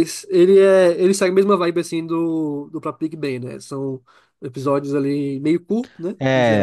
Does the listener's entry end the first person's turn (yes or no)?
yes